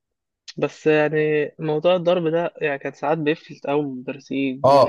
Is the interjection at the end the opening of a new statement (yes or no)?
yes